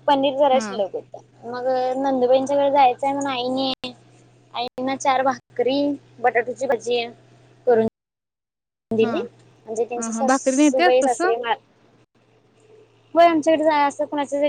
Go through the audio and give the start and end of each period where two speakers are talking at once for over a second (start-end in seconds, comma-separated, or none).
10.0-11.3